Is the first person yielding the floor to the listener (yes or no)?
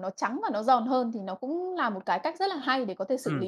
yes